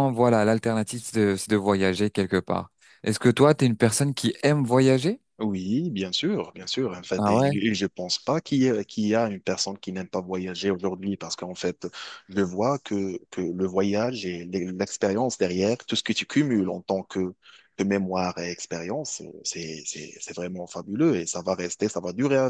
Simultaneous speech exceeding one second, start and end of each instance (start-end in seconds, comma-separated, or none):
none